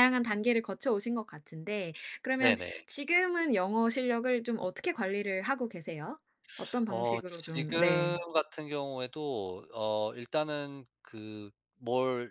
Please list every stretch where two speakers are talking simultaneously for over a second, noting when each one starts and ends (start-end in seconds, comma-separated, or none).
6.9-8.2